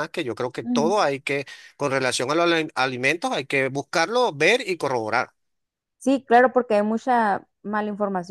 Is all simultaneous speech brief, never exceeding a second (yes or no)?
yes